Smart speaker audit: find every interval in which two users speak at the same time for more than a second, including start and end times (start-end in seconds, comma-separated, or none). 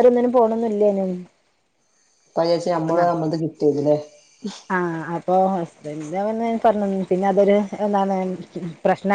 none